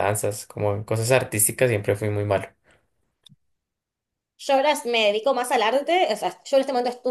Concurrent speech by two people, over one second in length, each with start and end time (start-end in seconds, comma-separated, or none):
none